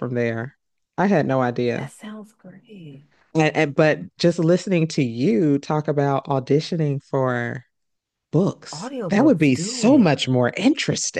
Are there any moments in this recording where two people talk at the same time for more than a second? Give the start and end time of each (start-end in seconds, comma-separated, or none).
8.7-10.2